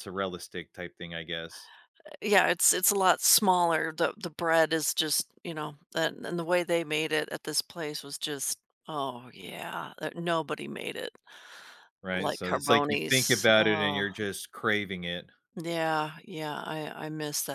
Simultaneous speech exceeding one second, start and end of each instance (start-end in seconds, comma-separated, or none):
12.1-14.0